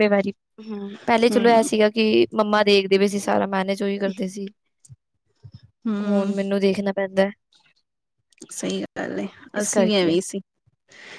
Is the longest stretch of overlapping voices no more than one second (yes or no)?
yes